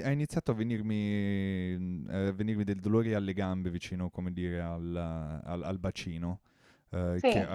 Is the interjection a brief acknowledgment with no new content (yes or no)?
yes